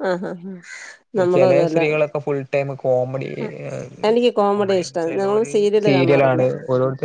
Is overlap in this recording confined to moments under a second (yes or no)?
no